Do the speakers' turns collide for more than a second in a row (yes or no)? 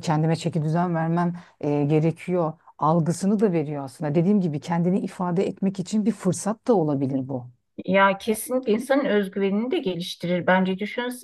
no